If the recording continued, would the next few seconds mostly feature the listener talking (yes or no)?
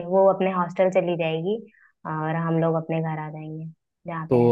yes